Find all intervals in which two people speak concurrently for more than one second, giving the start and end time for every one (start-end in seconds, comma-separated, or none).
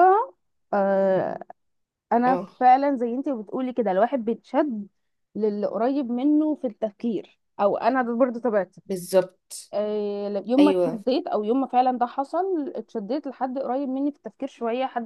none